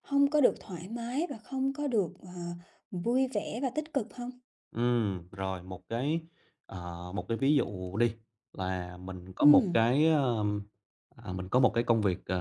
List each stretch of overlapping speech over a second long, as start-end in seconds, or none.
none